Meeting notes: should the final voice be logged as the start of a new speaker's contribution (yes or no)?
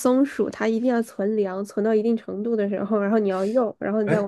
yes